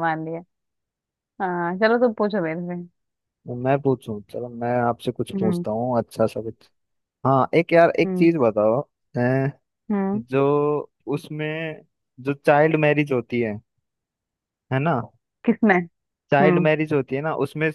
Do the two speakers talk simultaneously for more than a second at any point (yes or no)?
no